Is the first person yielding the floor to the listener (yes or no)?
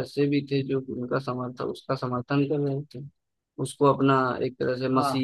no